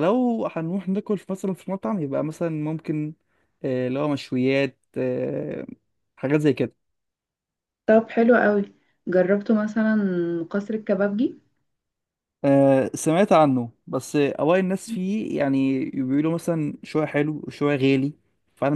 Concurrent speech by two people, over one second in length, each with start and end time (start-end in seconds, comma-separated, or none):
none